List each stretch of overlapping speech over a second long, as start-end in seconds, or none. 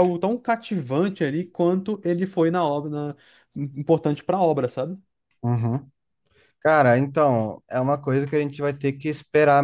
none